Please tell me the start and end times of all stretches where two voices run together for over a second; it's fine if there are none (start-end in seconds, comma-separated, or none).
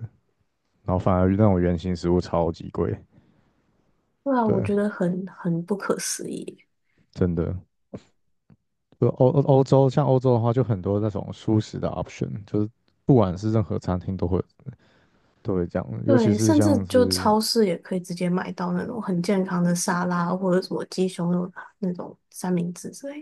16.0-17.3